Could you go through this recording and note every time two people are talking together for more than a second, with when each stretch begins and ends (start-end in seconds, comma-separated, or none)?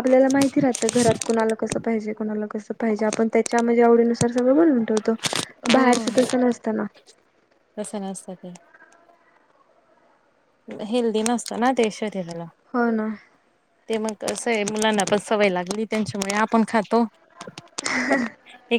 none